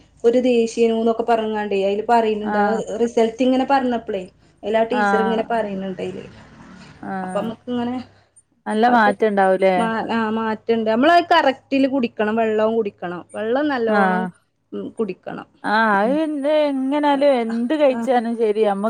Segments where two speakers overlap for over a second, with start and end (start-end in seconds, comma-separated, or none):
none